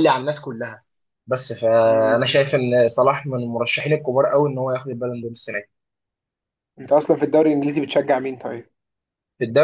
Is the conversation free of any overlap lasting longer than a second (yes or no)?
yes